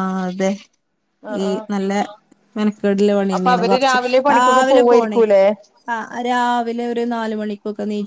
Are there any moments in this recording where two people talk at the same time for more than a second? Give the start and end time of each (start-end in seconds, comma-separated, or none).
3.4-5.2